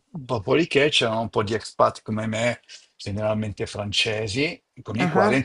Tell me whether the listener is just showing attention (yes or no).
yes